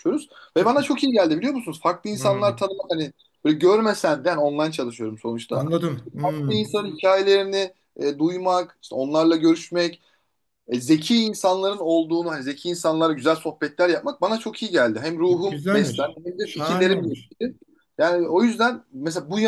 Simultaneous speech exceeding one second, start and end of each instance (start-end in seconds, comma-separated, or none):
15.3-17.3